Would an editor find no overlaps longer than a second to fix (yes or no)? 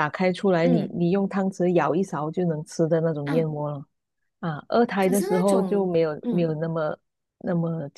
no